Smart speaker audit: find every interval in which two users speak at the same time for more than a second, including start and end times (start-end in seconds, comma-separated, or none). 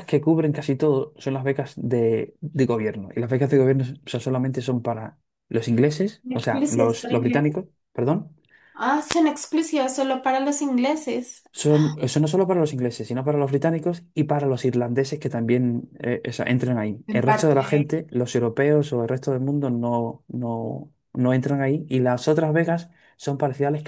6.3-7.5